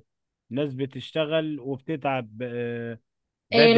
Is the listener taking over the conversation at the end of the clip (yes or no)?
yes